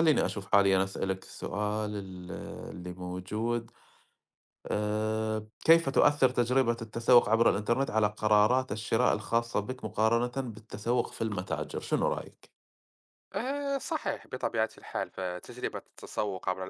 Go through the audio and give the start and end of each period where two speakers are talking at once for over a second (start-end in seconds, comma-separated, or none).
none